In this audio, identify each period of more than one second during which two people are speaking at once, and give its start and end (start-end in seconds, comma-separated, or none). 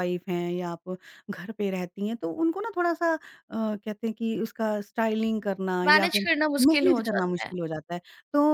5.8-7.5